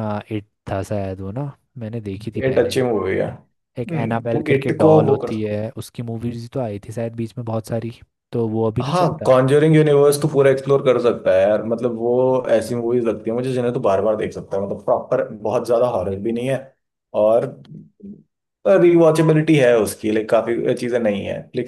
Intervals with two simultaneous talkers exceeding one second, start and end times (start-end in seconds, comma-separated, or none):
3.8-5.5